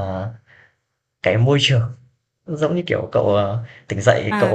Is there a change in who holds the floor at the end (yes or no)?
yes